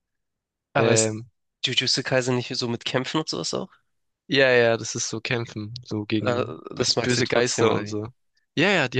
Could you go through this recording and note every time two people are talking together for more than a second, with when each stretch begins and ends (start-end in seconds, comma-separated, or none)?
6.2-8.0